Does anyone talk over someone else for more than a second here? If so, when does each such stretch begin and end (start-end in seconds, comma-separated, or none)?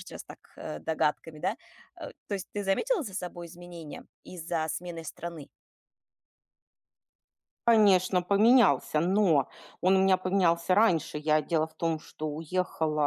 none